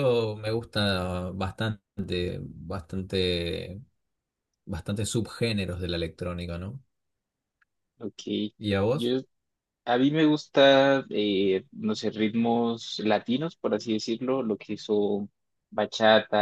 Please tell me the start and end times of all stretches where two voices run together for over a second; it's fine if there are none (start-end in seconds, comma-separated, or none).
none